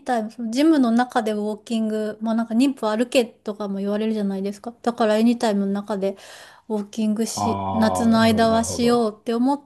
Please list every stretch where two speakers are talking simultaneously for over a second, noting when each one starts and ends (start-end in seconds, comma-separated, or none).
7.3-9.1